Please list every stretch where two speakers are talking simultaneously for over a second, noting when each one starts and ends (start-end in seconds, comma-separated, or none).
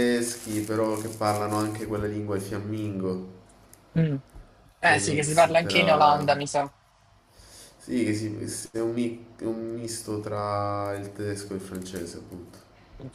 4.8-6.3